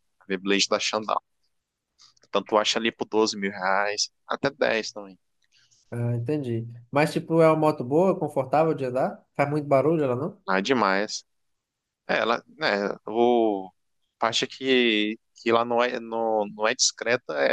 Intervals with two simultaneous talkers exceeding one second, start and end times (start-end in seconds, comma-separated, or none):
none